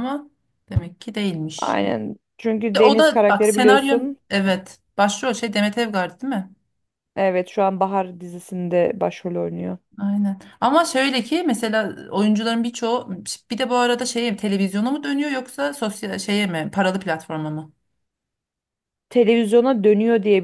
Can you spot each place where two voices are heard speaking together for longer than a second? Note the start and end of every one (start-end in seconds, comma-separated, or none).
2.8-4.2